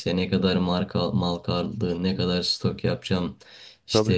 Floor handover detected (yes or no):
no